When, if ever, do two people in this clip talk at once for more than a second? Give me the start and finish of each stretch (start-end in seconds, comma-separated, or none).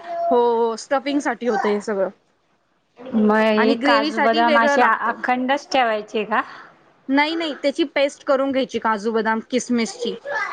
3.6-5.1